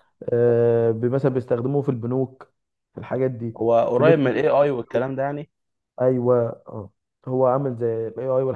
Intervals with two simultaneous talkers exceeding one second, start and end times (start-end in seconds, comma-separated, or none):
3.6-5.1